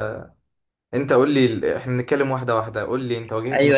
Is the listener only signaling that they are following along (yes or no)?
no